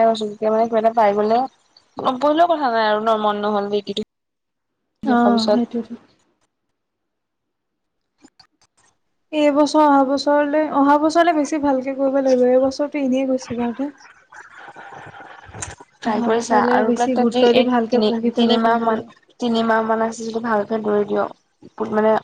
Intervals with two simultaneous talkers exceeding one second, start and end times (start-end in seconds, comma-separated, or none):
16.1-19.0